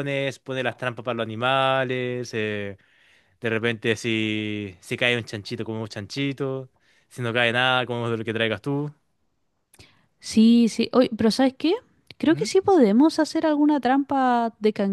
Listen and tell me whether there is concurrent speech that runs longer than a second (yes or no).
no